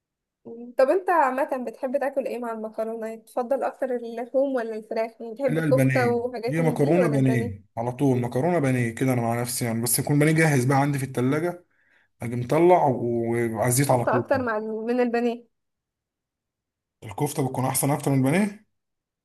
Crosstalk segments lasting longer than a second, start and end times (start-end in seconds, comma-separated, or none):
5.5-7.7